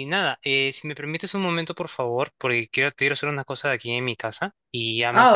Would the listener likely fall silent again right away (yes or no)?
no